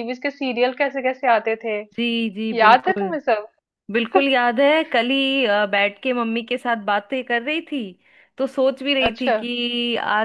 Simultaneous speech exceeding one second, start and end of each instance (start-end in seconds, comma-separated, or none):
none